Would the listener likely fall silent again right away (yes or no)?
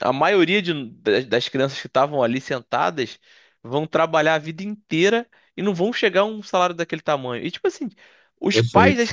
yes